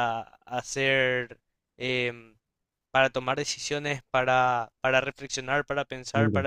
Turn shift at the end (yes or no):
no